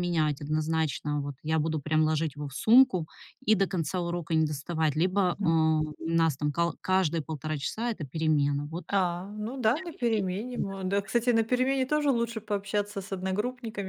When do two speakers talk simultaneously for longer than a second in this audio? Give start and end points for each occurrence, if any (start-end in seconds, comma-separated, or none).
none